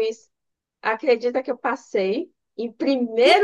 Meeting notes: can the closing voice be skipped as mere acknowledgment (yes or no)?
no